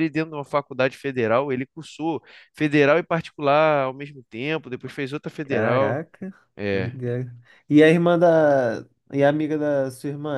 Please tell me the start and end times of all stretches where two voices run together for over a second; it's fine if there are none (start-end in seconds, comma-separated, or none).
none